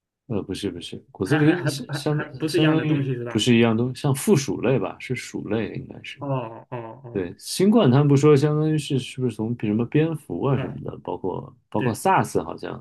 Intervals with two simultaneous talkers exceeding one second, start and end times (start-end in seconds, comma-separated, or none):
1.2-3.4